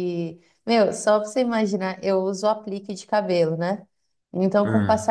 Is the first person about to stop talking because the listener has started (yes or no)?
no